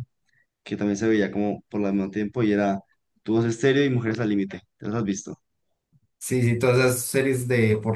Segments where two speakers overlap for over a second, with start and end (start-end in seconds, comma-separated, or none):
none